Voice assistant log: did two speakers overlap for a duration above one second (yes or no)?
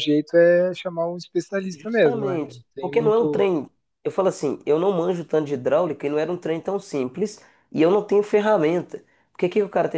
yes